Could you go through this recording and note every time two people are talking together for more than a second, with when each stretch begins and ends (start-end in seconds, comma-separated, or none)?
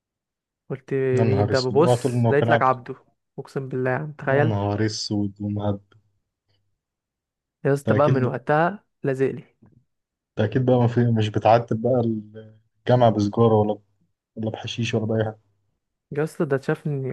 1.1-2.8